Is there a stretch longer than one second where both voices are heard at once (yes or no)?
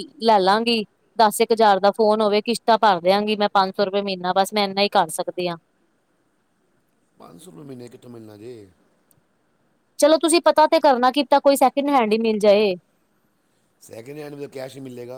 no